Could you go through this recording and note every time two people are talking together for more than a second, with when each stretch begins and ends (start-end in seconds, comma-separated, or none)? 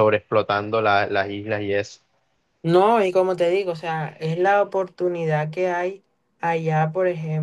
none